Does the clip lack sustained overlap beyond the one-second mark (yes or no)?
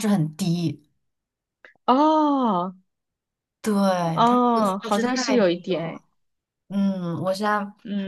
no